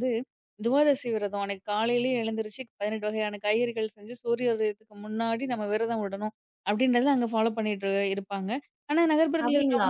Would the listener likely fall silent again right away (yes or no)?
yes